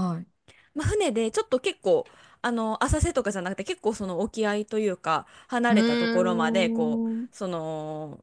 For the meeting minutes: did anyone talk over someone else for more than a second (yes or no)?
yes